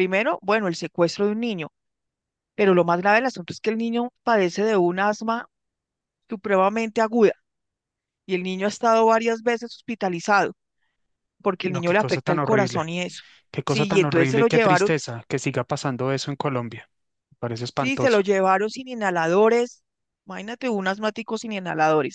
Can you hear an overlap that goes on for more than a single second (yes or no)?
yes